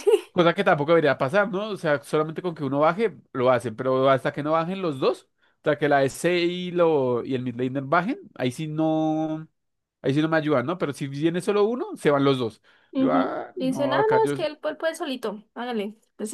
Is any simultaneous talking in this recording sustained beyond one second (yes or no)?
yes